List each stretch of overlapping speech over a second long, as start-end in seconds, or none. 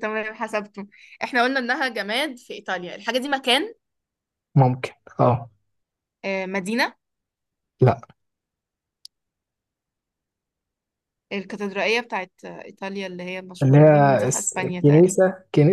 13.6-15.2